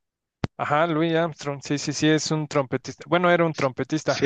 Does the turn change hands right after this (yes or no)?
yes